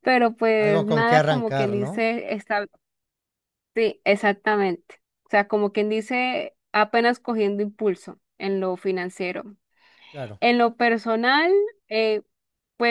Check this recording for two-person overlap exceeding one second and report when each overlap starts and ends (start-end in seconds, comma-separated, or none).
0.6-2.1